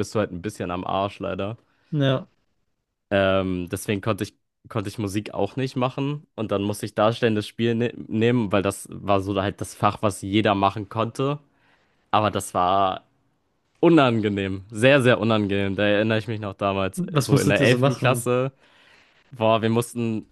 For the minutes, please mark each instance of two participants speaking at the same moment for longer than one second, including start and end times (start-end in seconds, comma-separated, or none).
16.9-18.3